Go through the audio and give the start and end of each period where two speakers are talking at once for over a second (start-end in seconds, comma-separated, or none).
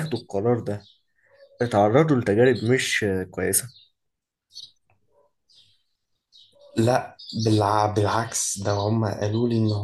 none